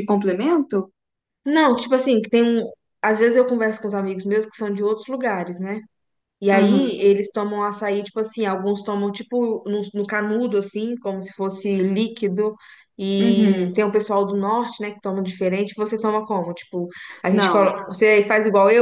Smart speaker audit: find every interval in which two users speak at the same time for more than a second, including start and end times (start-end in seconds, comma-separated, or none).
none